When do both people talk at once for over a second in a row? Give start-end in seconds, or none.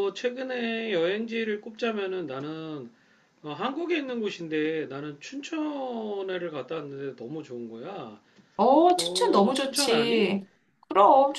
9.0-10.3